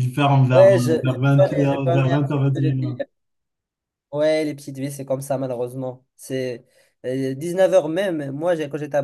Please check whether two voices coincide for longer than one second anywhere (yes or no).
yes